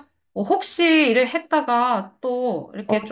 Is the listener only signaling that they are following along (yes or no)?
no